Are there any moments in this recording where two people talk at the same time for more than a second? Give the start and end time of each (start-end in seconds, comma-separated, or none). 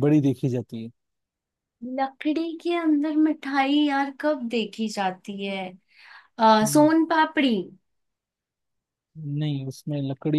none